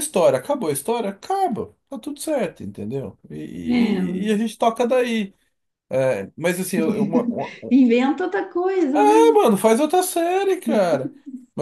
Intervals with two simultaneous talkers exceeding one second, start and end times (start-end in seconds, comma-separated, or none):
none